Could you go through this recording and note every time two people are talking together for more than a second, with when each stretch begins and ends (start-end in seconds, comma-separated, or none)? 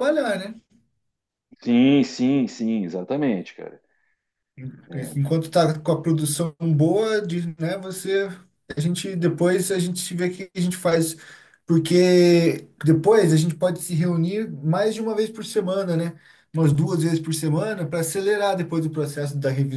none